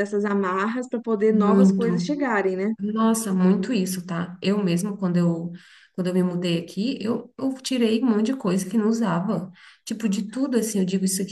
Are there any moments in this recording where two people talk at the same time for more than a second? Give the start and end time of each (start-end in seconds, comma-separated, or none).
none